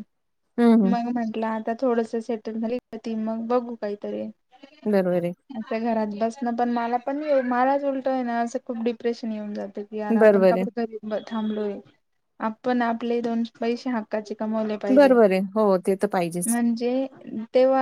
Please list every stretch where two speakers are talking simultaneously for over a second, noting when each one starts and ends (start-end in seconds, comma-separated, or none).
none